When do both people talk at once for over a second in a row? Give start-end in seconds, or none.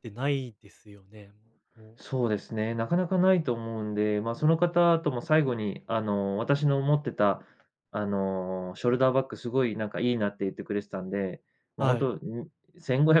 none